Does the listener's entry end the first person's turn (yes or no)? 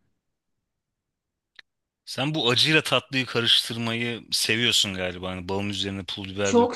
yes